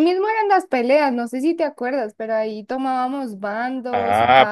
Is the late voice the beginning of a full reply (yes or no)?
yes